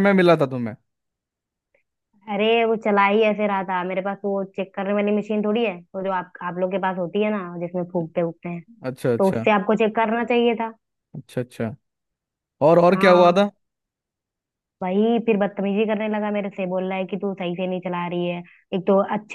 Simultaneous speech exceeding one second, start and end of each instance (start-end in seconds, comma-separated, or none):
none